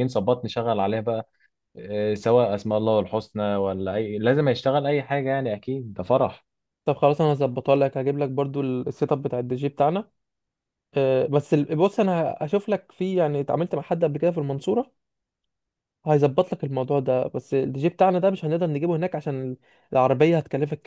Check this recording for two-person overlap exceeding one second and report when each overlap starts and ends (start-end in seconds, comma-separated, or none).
none